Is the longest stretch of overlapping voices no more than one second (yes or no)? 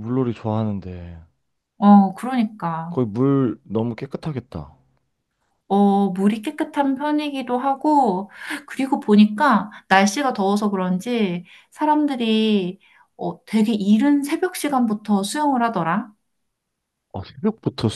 yes